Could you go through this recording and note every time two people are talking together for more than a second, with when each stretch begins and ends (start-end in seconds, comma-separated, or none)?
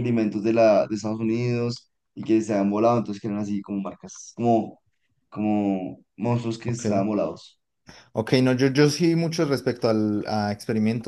none